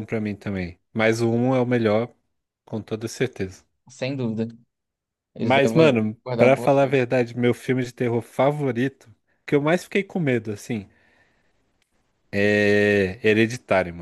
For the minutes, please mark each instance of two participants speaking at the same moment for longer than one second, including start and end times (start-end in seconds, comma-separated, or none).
5.4-7.0